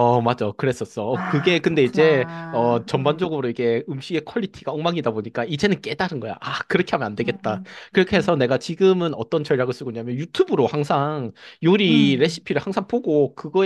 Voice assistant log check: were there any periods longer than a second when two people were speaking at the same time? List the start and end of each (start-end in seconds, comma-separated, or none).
1.1-3.5